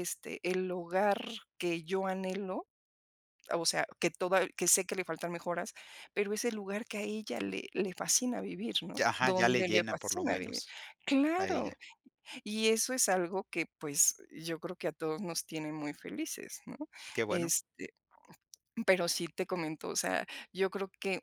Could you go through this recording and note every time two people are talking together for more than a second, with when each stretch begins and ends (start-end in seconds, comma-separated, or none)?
9.0-10.6